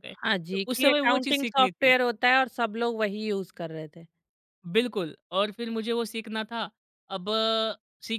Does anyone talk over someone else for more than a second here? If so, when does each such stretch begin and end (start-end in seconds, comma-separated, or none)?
0.5-1.9